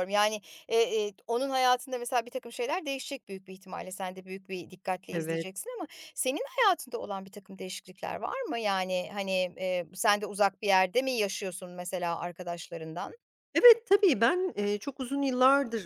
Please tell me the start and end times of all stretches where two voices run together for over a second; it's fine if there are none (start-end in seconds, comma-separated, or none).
none